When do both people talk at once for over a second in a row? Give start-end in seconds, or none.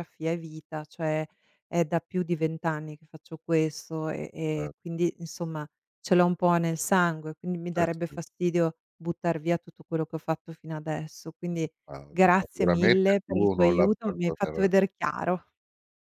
12.4-14.7